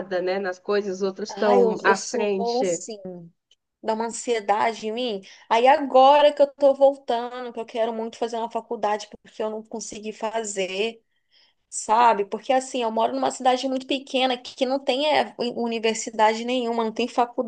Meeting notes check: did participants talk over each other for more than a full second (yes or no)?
yes